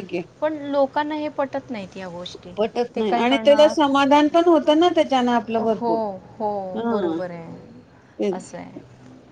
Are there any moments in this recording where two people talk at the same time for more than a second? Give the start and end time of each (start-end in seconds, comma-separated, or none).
none